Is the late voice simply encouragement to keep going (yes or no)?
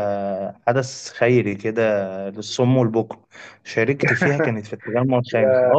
yes